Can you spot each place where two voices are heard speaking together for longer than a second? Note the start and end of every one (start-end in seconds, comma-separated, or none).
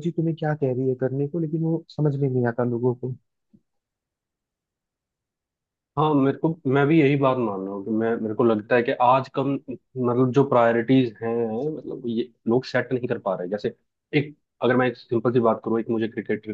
none